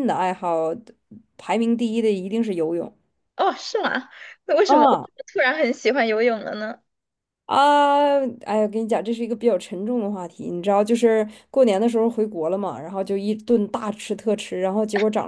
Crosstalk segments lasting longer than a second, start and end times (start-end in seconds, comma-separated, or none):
none